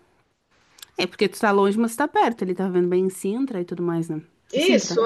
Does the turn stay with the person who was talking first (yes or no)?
no